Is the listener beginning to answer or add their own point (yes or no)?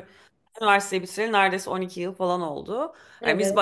no